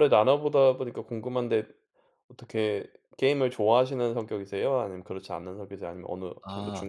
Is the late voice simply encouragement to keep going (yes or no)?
no